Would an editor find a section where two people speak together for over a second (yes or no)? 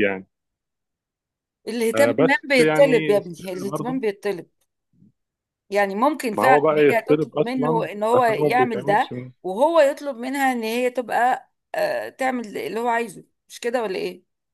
yes